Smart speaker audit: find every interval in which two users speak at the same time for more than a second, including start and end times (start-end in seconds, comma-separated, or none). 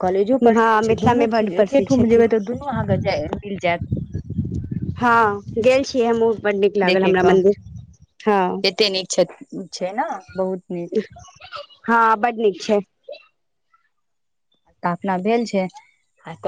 0.6-2.2